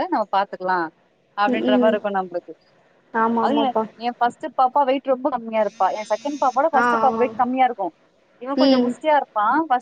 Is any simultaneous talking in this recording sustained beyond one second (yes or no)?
no